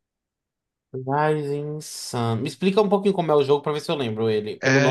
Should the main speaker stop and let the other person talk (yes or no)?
yes